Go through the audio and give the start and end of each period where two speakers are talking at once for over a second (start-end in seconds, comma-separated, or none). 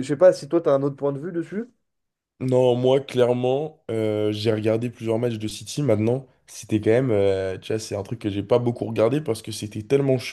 none